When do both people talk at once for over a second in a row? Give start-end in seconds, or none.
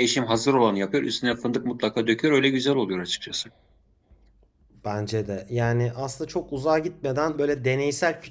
none